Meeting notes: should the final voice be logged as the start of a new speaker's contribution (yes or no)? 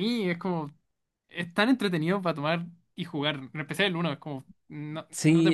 yes